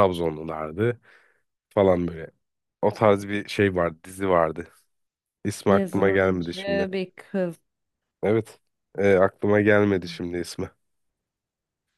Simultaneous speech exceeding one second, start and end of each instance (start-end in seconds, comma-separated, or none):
5.7-6.9